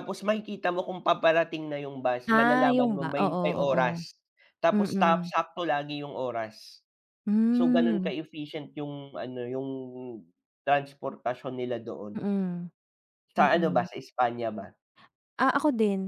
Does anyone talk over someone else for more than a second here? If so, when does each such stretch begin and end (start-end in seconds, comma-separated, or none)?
2.3-3.8